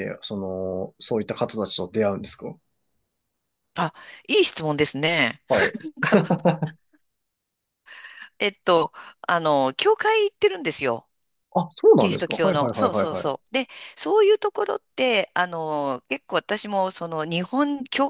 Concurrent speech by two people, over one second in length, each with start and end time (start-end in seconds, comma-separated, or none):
12.0-13.4